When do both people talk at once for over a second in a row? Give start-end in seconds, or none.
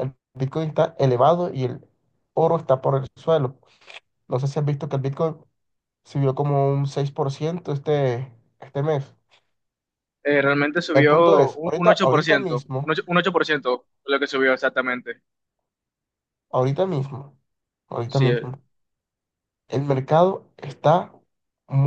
10.9-13.0